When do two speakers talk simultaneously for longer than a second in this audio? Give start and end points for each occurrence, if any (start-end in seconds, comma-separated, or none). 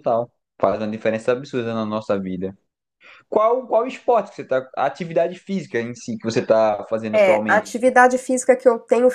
none